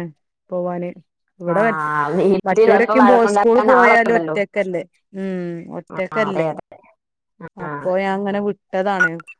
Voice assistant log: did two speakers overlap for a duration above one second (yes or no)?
yes